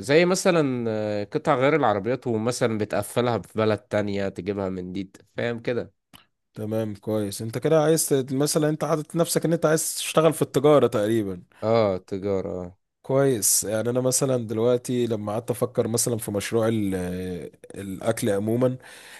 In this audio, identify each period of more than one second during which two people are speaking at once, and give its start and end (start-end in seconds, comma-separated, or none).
none